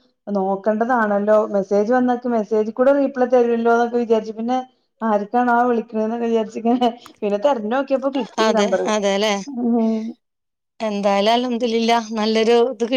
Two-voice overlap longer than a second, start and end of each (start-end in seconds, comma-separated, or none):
none